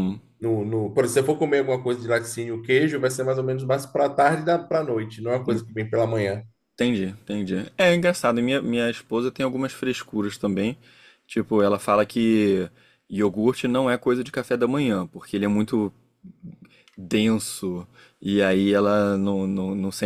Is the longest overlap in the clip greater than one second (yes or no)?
no